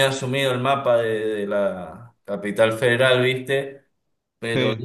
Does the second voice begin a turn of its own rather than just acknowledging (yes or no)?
no